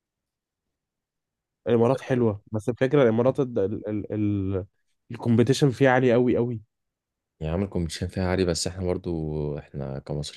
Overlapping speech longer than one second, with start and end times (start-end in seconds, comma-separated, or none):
none